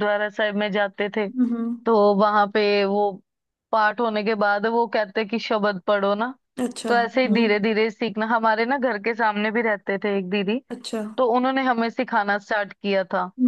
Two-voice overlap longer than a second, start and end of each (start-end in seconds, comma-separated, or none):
none